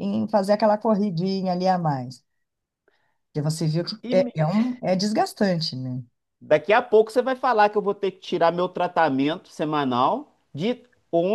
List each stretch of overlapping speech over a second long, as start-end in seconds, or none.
none